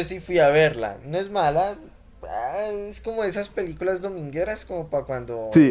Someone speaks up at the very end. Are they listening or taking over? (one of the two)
taking over